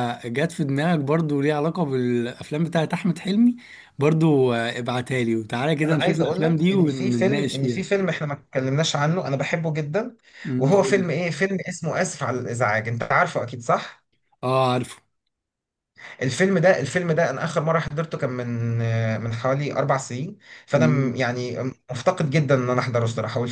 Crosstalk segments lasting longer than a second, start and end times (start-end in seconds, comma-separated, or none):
5.8-7.8